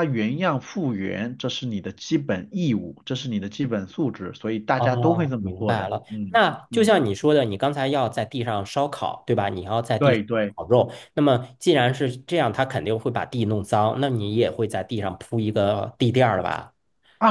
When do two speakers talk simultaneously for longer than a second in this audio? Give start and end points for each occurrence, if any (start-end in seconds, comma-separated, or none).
4.8-6.9